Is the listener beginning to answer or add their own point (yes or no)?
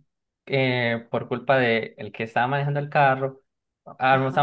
no